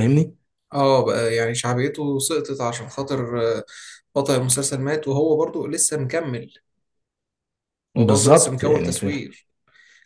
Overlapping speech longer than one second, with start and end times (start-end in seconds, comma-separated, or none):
8.0-9.2